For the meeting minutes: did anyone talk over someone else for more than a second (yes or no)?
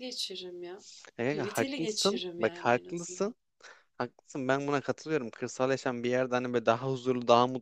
yes